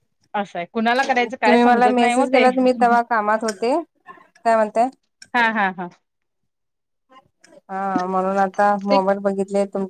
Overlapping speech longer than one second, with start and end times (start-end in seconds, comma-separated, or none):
1.5-3.1